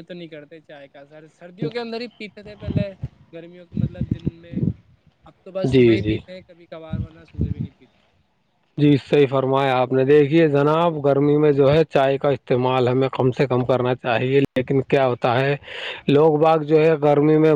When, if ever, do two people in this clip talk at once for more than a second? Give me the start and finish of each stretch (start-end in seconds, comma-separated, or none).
none